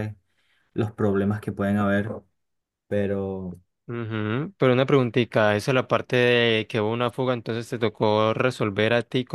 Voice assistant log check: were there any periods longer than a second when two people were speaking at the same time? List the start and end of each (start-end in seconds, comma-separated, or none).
none